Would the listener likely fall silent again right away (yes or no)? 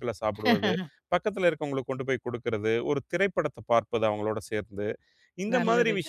yes